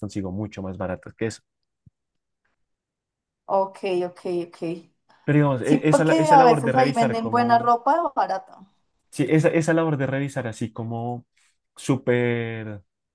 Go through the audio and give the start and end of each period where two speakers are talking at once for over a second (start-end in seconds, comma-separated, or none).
5.6-7.7